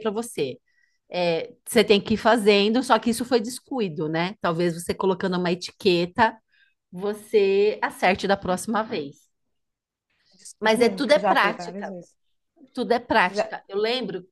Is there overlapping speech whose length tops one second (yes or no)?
yes